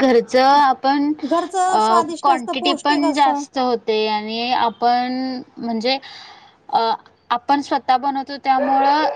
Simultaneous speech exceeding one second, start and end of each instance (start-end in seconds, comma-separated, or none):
1.7-3.4